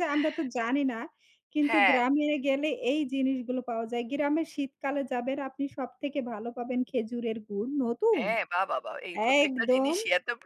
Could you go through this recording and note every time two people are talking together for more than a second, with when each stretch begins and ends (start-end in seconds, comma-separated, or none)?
none